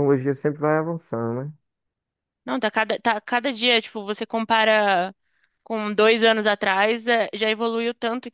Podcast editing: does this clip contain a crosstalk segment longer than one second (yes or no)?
no